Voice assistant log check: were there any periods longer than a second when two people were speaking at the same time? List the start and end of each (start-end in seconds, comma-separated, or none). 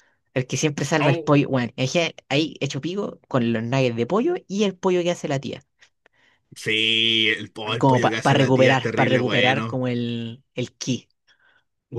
7.8-9.8